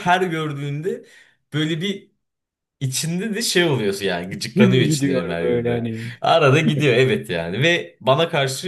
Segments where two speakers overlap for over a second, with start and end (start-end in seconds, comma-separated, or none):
4.5-6.1